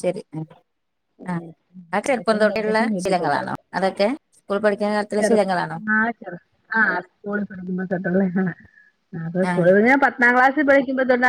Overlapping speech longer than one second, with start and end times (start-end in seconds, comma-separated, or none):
2.1-3.4